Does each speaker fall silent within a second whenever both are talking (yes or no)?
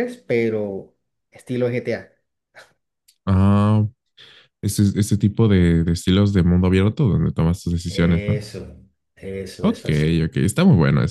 yes